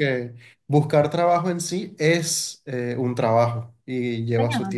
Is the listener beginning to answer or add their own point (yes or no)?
yes